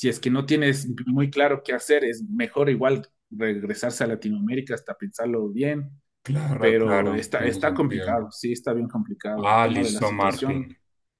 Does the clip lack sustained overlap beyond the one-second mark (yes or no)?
no